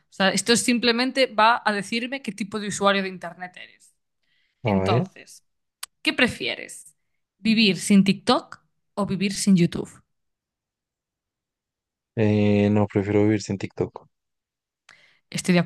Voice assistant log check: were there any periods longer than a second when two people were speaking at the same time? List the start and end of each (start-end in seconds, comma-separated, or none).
none